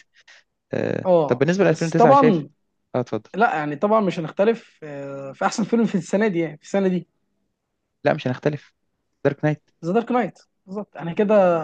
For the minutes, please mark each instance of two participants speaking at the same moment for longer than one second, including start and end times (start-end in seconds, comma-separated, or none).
1.0-2.5